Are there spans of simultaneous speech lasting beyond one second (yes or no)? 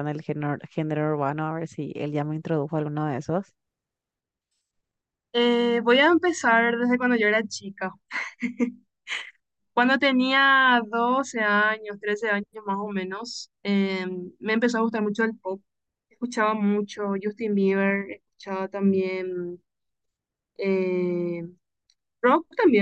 no